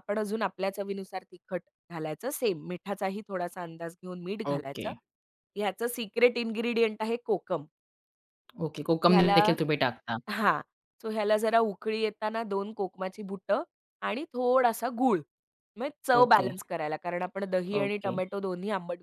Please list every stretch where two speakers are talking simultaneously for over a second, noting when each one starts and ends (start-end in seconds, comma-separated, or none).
none